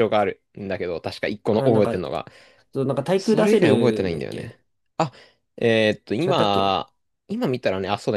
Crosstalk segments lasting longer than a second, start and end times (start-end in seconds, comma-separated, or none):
3.1-4.6